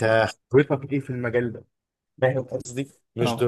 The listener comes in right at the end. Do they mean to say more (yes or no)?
no